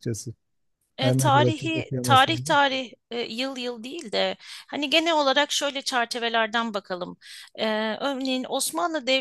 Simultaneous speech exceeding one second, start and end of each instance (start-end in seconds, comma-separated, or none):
1.0-2.5